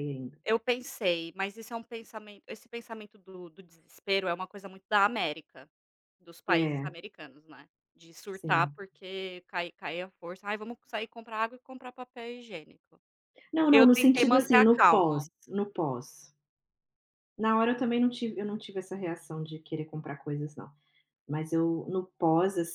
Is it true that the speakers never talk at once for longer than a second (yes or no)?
no